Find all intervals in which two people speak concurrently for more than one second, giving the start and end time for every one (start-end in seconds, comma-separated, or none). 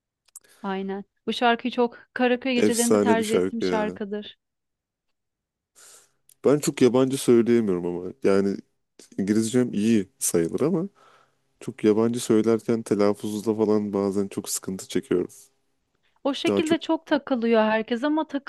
2.5-4.0